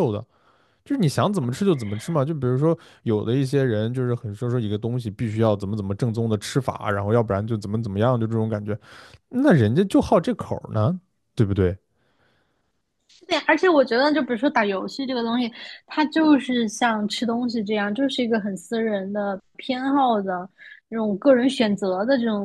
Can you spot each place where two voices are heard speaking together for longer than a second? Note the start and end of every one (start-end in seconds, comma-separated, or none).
none